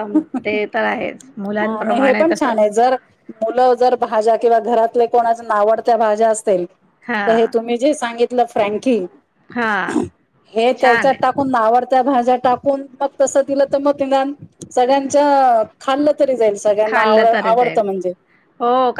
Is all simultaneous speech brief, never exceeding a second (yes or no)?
no